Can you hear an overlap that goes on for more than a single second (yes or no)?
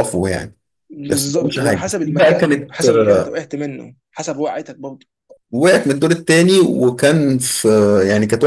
yes